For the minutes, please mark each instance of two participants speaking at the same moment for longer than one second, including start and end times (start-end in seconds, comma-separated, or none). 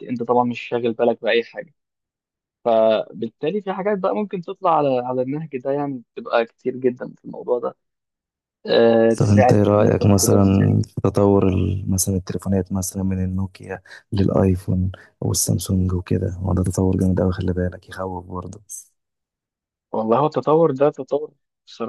9.2-10.4